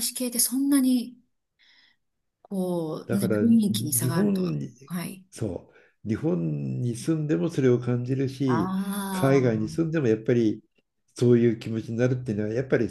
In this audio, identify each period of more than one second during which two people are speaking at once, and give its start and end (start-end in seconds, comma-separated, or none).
3.0-4.7, 8.4-9.9